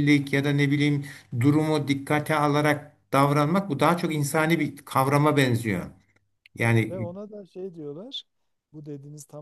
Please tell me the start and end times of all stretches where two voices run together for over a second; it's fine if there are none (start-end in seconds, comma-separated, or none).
none